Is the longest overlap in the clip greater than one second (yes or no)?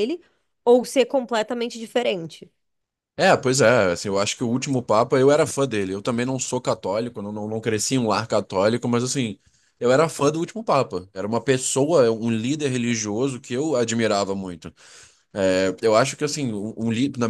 no